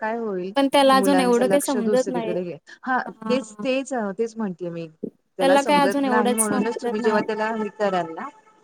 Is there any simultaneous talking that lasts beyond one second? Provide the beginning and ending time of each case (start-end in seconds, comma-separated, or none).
1.0-2.3, 5.7-7.2